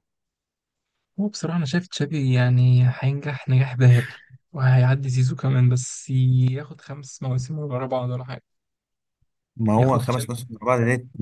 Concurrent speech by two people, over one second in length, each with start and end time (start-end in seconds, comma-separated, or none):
none